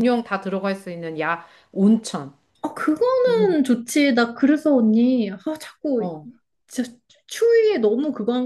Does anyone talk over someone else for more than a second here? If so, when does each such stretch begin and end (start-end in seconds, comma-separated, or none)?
none